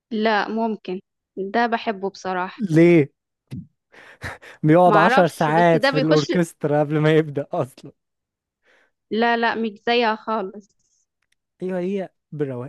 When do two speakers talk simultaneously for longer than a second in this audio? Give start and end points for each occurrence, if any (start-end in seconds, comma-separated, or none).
4.9-6.3